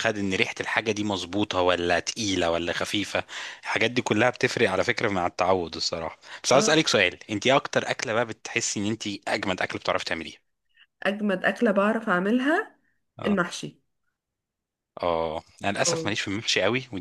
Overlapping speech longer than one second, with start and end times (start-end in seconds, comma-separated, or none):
none